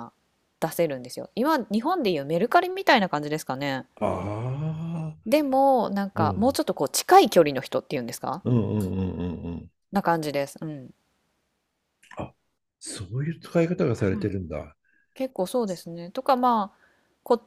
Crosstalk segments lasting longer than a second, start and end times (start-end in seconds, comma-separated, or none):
none